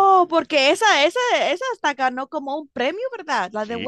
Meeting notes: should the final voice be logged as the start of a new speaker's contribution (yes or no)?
yes